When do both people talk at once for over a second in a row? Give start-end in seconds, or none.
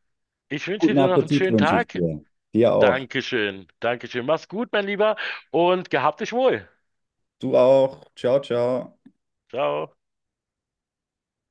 0.8-2.0